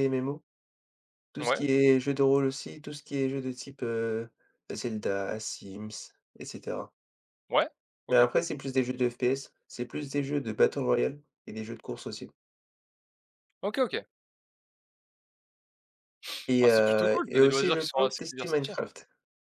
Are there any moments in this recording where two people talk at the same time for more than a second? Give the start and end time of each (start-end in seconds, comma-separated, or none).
16.6-18.8